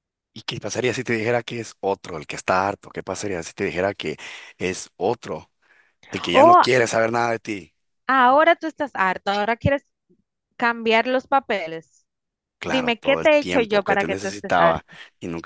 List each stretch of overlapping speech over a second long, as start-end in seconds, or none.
12.6-14.8